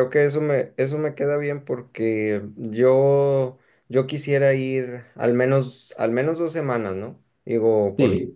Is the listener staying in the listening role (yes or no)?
yes